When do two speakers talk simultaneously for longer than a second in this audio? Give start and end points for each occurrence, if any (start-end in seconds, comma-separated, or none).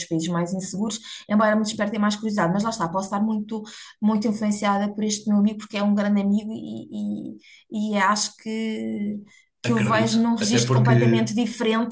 9.6-11.3